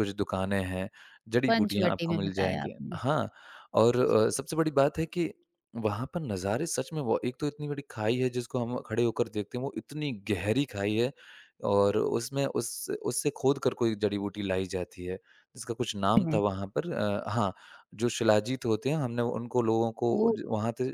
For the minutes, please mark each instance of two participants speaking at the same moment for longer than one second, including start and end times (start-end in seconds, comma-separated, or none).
1.5-3.0